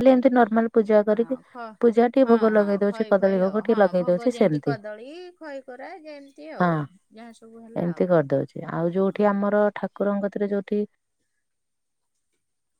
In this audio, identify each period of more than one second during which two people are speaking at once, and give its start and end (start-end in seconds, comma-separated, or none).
2.2-4.7